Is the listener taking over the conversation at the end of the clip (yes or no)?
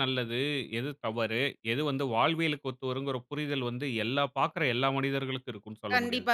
yes